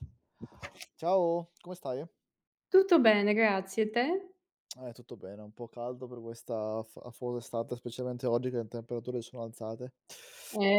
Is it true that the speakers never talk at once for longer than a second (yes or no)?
yes